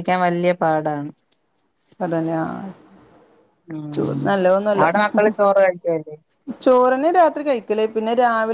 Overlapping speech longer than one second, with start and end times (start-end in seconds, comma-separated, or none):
none